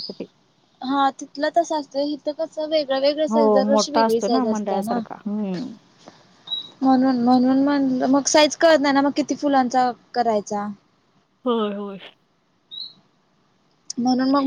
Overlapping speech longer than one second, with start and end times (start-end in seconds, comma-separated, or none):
3.3-5.0